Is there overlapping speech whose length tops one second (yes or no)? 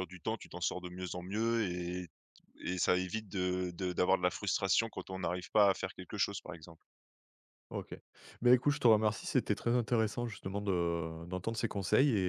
no